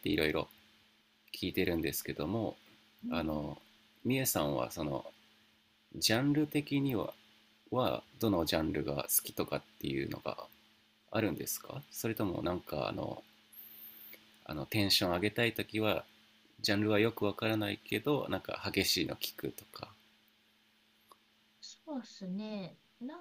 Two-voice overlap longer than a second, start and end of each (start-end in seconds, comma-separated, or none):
none